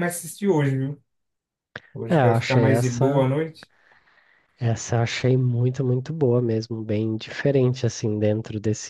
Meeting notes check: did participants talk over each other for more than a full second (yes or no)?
yes